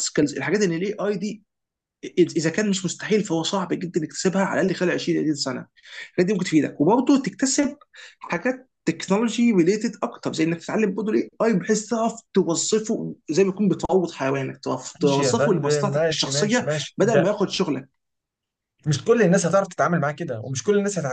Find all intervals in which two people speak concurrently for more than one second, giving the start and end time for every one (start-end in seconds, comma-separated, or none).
15.0-17.3